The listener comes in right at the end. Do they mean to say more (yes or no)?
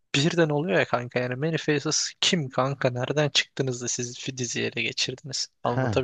yes